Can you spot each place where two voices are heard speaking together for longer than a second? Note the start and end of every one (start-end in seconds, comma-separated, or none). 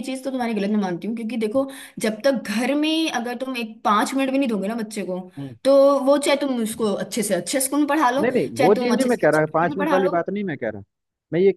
8.2-10.2